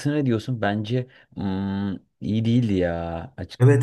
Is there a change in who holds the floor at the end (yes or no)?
yes